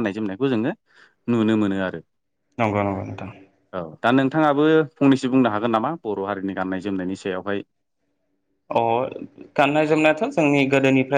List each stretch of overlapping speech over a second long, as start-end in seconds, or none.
none